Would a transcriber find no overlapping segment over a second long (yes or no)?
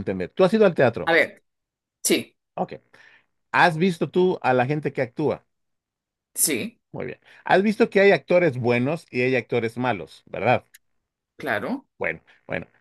yes